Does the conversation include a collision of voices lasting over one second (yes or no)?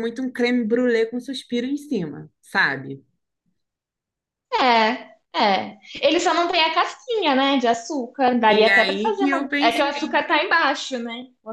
yes